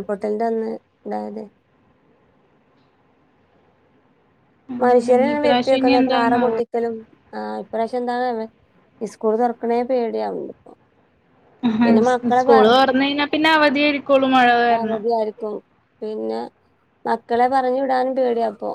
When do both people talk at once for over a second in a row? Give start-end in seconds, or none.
4.8-6.5